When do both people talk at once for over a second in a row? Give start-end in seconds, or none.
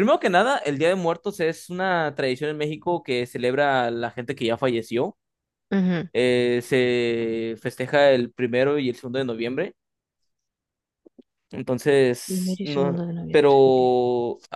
12.2-13.8